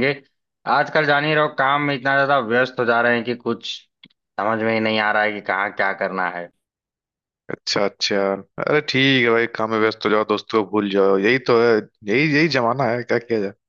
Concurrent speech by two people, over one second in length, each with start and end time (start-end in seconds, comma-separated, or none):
none